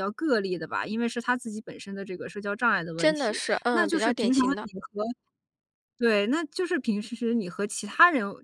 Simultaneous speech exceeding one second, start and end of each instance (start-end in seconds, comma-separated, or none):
3.0-4.7